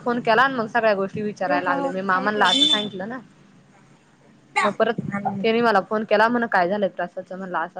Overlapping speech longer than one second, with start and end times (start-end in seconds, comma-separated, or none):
1.4-3.2